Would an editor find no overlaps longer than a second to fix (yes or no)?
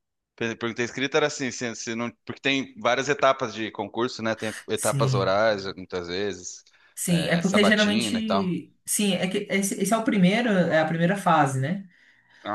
no